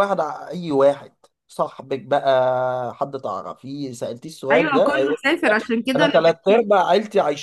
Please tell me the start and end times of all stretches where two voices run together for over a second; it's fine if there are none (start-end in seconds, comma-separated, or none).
4.5-6.2